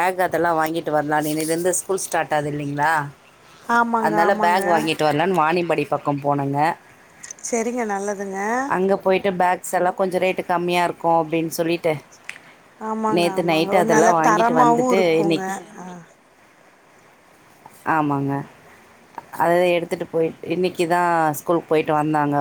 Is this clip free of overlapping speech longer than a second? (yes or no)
no